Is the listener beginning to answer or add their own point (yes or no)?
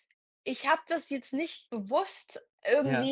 no